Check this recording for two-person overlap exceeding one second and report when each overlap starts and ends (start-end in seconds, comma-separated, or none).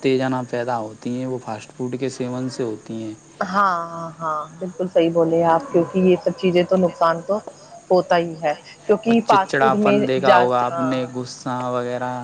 9.1-11.0